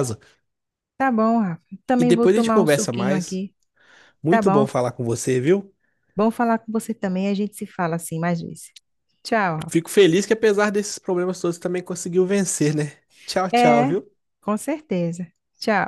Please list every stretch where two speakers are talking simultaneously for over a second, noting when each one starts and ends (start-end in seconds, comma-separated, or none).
2.0-3.4